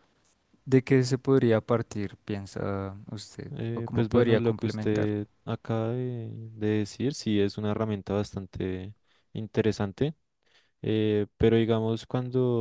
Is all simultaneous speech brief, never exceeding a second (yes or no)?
no